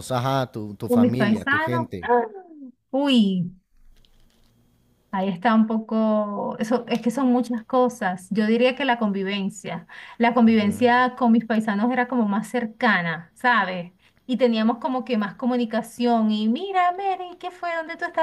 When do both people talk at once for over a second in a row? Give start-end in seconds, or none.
0.9-2.1